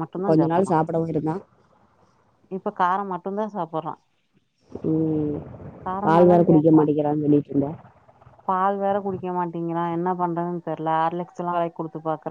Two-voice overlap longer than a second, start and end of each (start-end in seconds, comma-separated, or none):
none